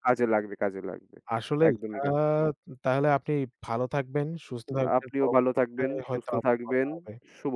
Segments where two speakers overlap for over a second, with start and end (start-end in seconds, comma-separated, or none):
5.0-6.9